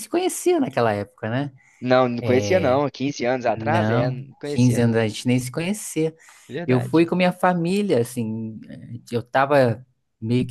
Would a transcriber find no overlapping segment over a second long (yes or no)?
no